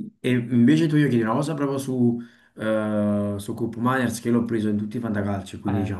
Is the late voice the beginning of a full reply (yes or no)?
yes